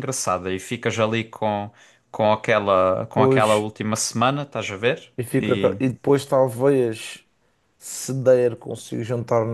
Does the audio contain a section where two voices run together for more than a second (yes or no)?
no